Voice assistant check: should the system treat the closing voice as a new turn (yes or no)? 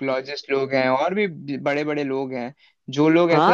yes